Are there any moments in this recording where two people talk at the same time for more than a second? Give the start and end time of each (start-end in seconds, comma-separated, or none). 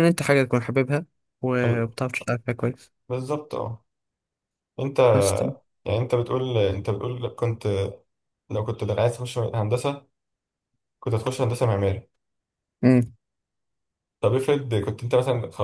none